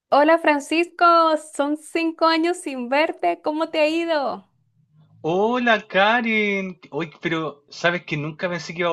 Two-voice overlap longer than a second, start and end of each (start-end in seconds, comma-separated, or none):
none